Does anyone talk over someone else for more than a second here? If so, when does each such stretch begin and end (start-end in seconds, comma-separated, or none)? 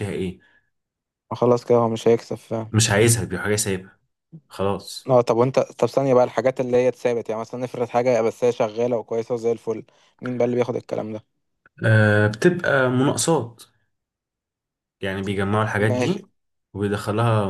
none